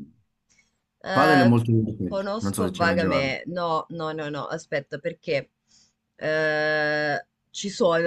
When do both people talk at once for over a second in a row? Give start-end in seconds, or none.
2.1-3.4